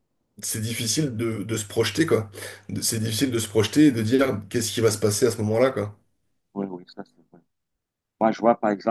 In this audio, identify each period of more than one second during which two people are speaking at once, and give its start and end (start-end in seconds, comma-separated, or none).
none